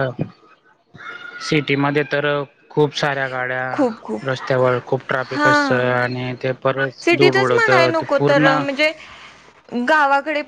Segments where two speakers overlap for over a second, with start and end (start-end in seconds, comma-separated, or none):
7.0-8.6